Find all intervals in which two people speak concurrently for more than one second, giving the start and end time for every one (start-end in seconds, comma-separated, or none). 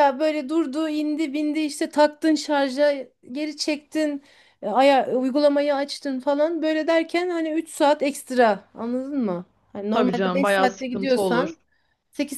9.9-11.5